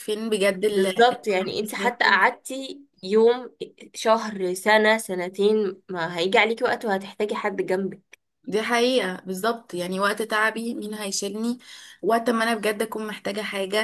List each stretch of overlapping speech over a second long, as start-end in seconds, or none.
0.7-2.3